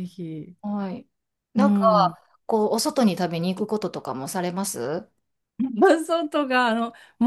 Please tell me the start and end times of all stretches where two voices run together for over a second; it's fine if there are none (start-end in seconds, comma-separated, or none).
none